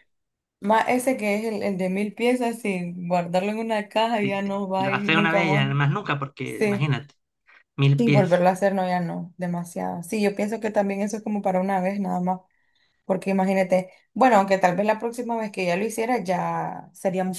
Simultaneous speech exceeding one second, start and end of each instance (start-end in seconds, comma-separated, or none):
4.2-5.7